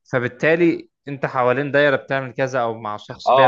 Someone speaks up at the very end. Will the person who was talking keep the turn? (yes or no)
no